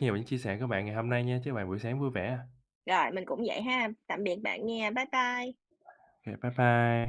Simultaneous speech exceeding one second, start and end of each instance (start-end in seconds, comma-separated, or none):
none